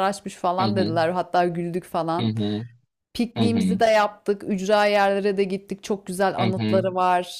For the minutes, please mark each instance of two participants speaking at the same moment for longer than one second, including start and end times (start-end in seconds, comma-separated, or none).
none